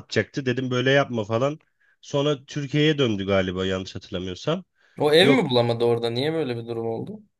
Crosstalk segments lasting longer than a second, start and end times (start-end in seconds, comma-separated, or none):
none